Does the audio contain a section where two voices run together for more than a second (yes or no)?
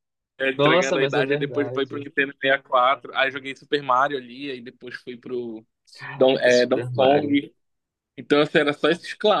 yes